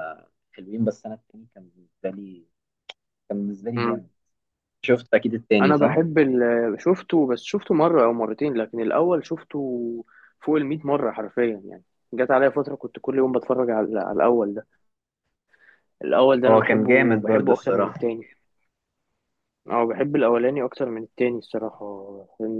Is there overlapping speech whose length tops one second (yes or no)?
yes